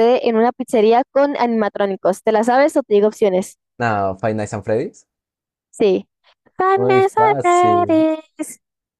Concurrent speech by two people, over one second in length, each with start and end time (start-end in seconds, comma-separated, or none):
6.7-8.1